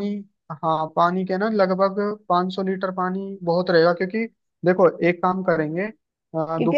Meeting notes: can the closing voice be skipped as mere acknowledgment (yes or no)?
no